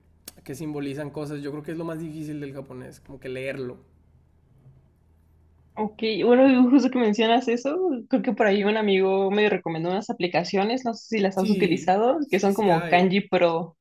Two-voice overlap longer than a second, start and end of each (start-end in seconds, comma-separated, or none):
11.3-13.1